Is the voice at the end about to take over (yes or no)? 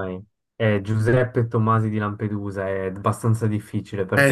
yes